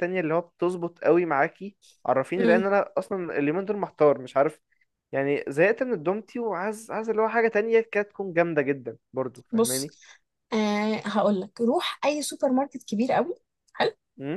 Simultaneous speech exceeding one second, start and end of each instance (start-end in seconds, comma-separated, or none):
none